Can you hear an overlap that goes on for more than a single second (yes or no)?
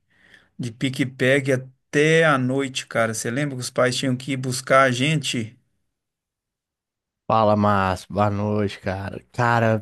no